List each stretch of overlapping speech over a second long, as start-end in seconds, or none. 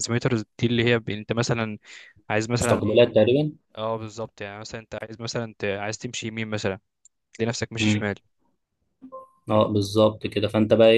none